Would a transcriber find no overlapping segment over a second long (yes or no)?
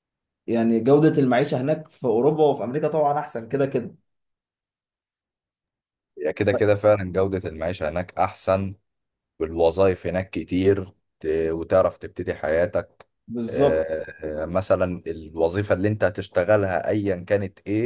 yes